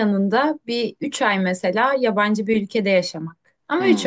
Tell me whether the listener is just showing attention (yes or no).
no